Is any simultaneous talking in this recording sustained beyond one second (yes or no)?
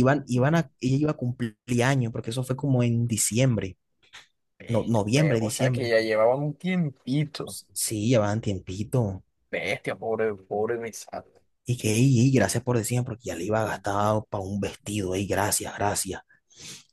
yes